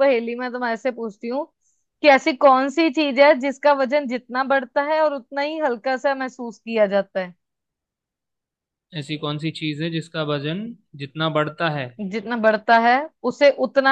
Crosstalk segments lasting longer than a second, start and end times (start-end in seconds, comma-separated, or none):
none